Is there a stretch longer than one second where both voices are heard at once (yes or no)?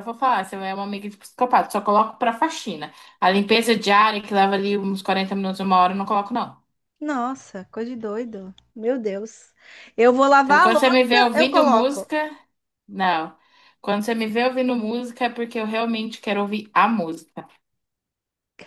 yes